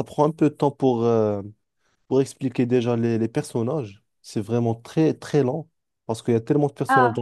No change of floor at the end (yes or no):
yes